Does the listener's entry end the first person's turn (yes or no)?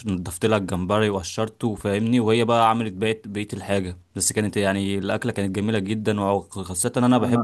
no